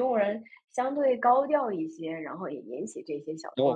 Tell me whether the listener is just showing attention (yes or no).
no